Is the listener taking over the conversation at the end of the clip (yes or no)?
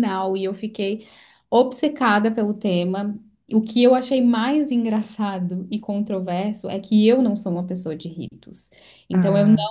no